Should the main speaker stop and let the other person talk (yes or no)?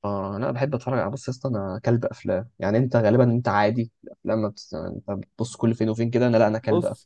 yes